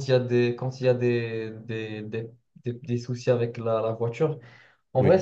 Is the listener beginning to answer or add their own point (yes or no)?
no